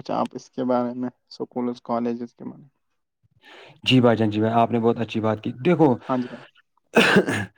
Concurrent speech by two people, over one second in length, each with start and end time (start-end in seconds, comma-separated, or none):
none